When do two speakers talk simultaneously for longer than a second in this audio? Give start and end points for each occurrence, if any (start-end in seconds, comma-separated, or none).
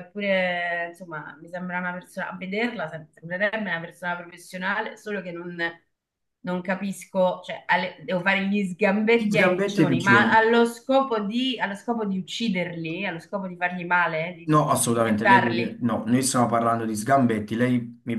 9.1-10.5, 14.4-15.8